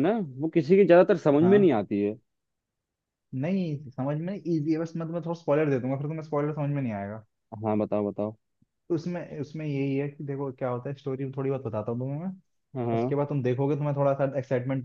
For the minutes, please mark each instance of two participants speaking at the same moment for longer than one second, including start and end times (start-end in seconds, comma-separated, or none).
none